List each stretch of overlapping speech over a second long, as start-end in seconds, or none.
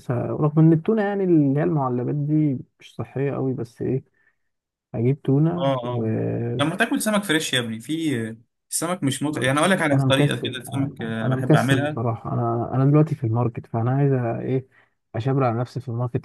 9.3-12.0